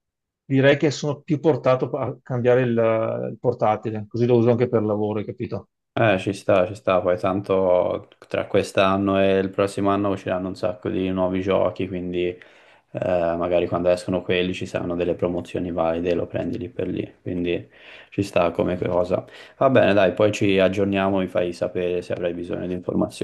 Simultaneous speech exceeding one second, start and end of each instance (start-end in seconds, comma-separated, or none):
none